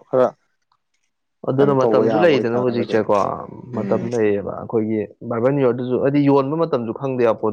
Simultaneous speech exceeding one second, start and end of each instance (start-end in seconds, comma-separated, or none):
1.6-2.9